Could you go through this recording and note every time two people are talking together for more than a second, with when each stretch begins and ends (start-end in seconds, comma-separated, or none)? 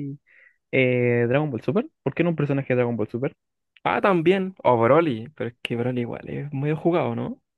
none